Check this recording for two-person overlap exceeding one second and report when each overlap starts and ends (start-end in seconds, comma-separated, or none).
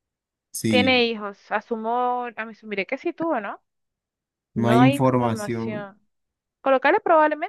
4.5-5.9